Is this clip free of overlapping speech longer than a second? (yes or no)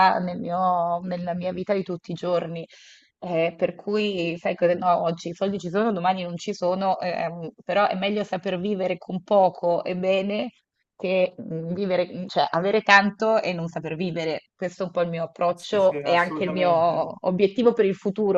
no